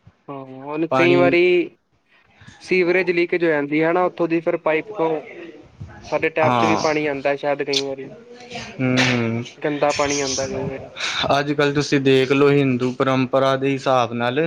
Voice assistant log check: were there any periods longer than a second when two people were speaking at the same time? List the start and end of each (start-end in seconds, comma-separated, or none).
none